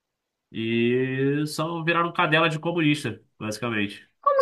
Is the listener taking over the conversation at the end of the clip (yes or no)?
yes